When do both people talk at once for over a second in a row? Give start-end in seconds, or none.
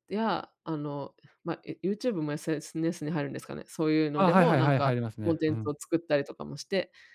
4.2-5.7